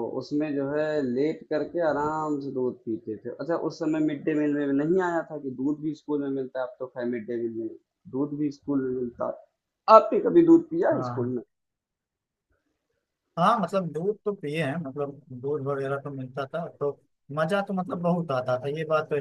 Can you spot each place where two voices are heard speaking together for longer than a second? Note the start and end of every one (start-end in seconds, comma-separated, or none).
none